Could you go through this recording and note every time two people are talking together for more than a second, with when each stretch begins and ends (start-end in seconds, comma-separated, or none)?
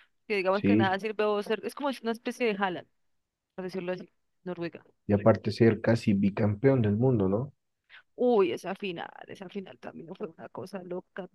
none